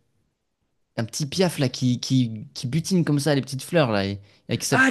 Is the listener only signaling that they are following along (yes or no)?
no